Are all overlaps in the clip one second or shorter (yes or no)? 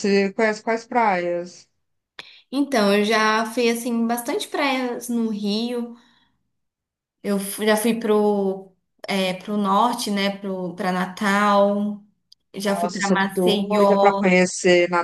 no